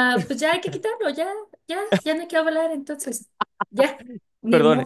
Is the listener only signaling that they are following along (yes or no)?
no